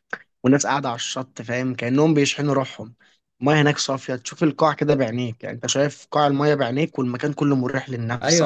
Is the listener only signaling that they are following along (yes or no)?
no